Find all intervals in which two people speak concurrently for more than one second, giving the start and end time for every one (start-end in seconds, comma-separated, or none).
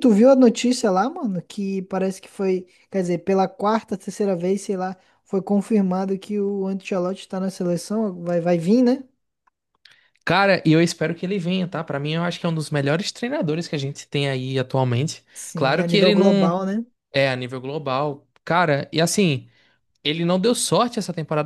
15.3-16.6